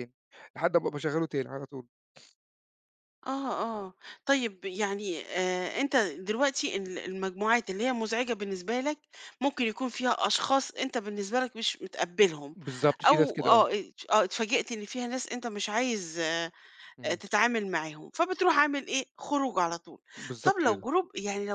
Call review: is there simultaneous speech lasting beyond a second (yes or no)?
no